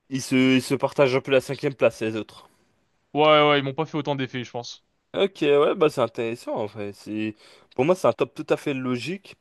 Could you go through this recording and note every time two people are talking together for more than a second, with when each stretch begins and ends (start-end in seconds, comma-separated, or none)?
none